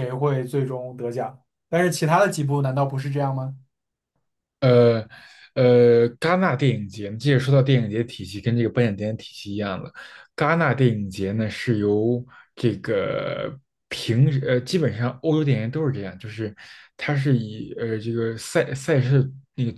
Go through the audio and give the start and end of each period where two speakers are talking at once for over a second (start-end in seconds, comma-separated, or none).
none